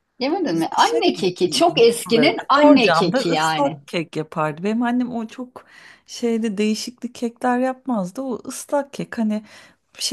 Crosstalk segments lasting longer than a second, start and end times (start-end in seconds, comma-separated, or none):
1.9-3.8